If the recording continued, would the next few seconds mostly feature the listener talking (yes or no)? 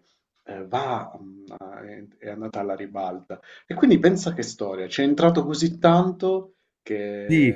yes